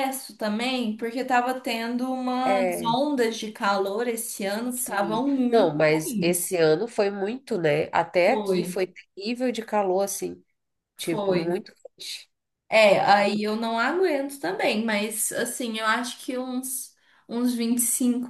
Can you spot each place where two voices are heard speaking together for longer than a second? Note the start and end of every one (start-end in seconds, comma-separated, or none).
4.7-6.6